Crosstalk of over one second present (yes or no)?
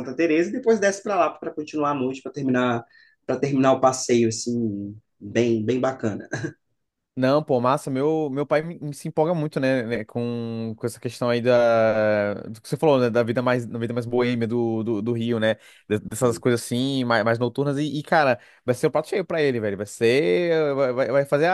no